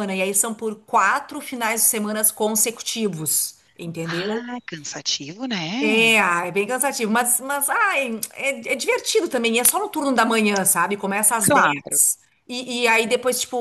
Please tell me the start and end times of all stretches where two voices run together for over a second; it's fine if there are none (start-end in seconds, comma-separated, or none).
none